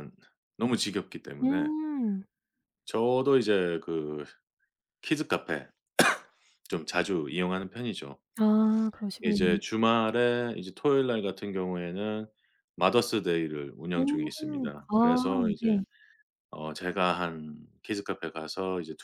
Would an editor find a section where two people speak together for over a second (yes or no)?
yes